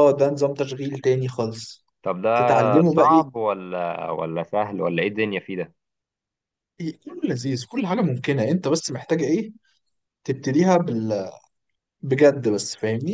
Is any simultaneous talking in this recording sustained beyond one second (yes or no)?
no